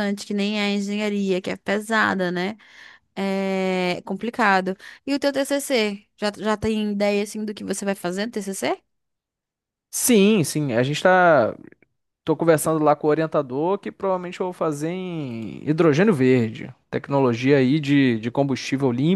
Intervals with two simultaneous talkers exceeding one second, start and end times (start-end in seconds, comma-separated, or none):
none